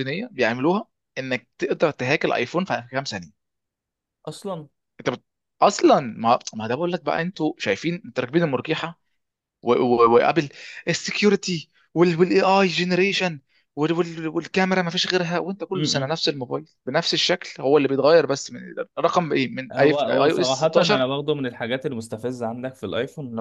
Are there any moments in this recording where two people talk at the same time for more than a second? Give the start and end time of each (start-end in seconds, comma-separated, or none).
19.7-21.0